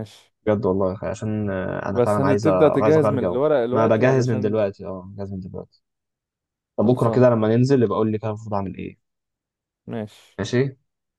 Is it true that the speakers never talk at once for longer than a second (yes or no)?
no